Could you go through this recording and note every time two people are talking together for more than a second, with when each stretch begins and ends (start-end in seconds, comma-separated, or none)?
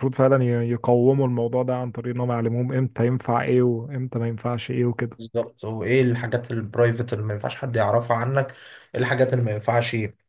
none